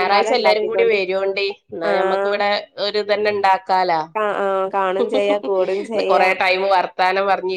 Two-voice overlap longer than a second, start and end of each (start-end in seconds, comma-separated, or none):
none